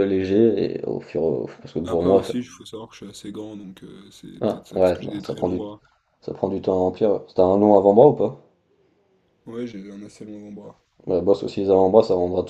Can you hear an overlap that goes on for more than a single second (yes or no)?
yes